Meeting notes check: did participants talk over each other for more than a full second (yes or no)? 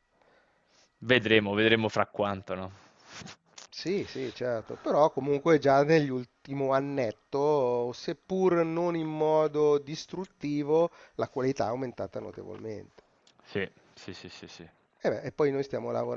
no